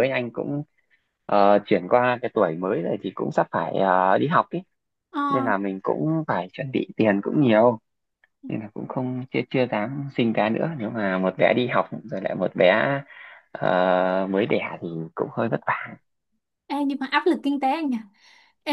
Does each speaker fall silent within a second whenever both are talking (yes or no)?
yes